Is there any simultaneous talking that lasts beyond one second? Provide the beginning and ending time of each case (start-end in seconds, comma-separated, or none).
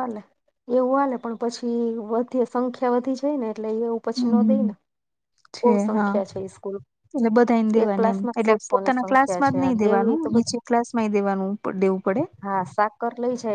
7.8-10.6